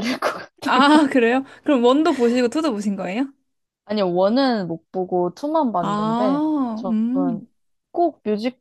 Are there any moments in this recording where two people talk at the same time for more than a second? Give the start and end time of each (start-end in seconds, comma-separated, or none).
5.8-7.4